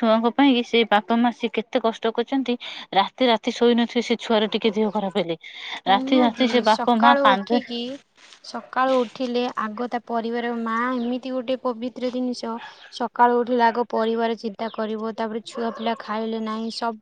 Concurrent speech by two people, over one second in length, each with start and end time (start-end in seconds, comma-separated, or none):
5.9-7.6